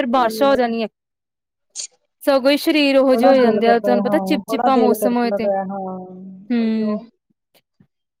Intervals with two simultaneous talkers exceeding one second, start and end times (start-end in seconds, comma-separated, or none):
3.1-5.5